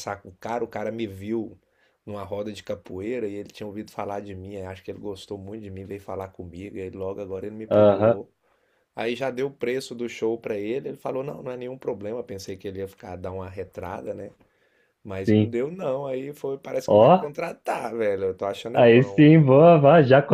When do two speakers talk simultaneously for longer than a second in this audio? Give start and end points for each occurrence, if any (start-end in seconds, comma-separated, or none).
none